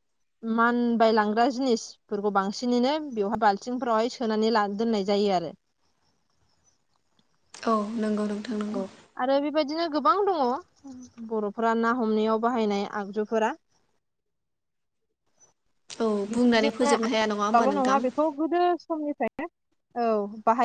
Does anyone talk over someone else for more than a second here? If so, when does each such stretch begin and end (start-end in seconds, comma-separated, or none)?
16.3-18.0